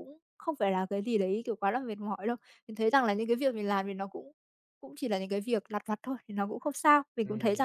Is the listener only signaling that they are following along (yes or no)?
no